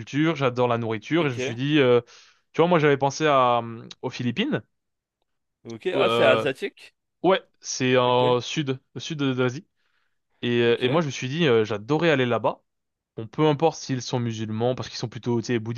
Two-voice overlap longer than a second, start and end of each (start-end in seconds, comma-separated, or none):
none